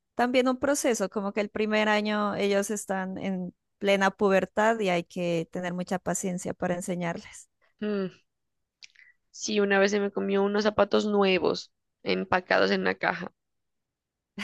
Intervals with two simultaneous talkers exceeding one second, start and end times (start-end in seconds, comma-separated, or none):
none